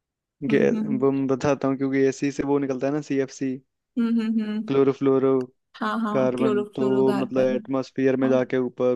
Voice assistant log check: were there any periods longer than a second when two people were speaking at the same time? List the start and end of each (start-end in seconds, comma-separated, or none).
6.1-7.6